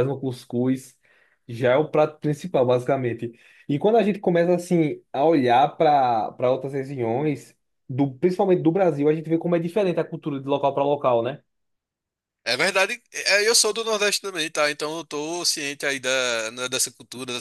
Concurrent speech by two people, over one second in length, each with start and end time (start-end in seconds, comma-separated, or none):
none